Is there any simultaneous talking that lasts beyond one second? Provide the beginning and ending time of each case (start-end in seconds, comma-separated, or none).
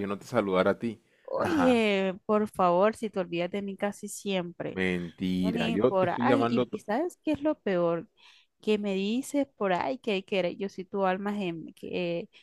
5.4-6.8